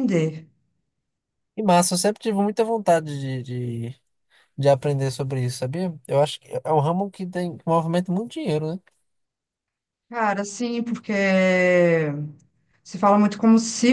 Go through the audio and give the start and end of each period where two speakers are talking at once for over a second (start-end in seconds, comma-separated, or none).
none